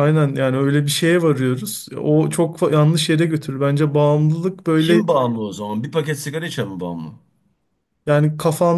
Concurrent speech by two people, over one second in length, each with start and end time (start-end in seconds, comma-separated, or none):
none